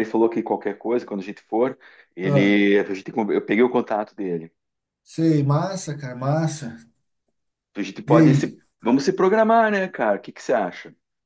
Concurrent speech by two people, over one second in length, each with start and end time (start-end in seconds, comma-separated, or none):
none